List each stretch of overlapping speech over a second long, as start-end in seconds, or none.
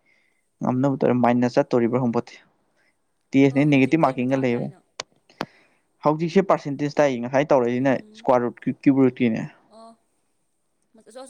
3.5-4.8